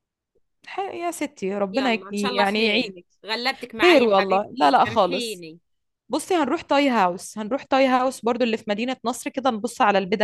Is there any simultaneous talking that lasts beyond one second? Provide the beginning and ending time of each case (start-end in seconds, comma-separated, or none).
1.7-3.0, 3.8-5.4